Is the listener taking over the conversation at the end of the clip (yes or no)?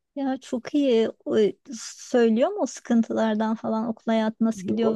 yes